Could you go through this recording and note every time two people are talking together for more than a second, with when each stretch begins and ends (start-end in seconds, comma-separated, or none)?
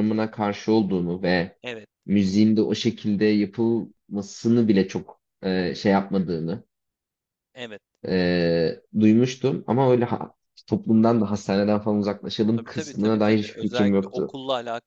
12.6-14.4